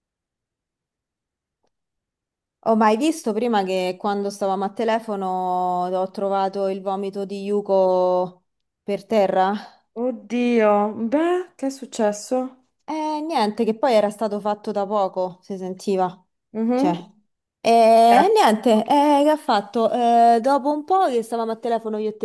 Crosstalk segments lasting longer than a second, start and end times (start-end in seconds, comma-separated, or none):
none